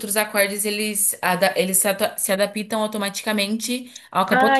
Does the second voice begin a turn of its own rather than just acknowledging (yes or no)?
yes